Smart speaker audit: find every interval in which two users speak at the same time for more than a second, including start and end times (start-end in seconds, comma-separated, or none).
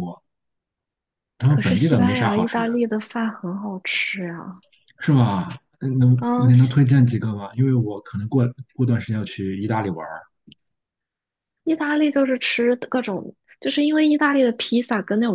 1.5-2.9